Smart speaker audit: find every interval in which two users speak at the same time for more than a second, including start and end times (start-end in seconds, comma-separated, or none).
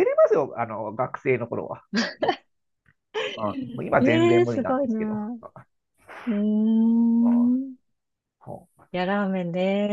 4.0-5.2